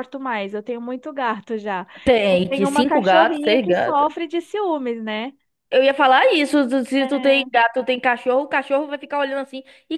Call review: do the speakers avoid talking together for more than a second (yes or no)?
no